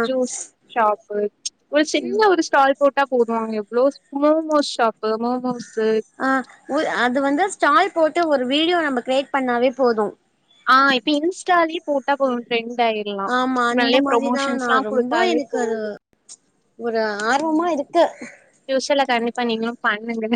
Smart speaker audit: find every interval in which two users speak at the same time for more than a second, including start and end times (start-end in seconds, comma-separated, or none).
13.8-15.8